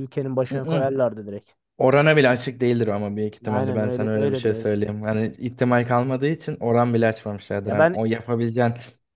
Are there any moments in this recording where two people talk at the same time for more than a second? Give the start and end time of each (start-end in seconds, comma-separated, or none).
3.5-4.8